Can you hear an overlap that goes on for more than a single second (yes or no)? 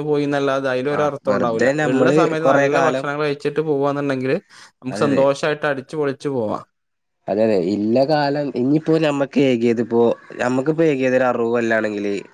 yes